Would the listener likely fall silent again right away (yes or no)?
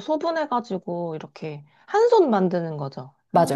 no